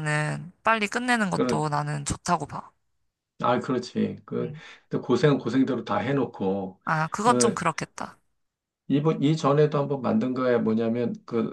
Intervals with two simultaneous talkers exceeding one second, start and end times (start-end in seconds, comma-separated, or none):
none